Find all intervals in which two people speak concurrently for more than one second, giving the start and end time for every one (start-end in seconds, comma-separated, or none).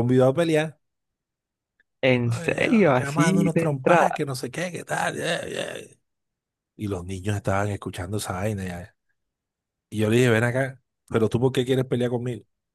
2.2-4.2